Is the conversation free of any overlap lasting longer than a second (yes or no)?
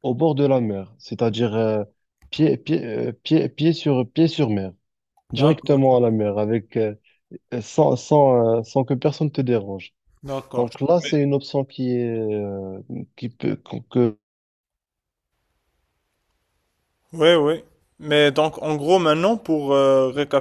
yes